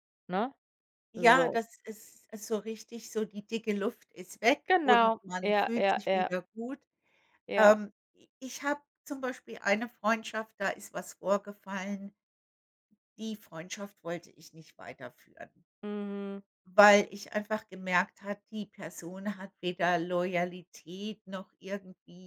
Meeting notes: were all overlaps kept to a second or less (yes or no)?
no